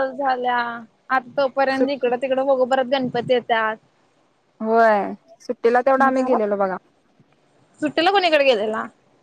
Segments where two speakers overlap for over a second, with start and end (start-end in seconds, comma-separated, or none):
none